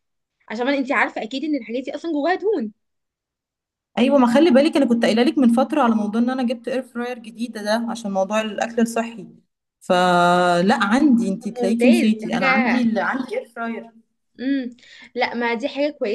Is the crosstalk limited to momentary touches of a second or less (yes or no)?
no